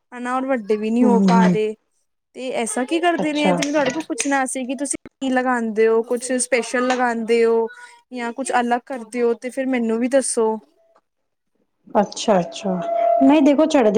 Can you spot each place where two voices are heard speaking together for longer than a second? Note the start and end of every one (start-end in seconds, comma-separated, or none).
none